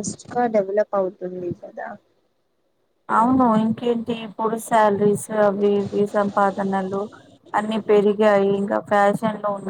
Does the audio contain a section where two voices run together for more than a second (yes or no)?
no